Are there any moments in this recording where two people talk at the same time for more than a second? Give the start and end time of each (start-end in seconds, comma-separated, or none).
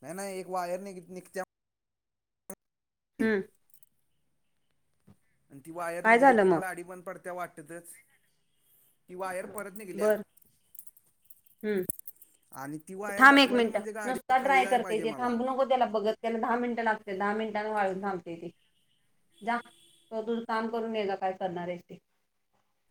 13.2-15.3